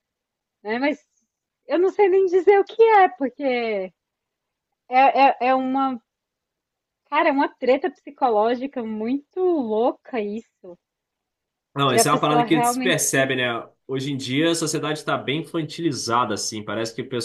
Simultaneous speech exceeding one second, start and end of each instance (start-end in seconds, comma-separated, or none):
11.8-13.0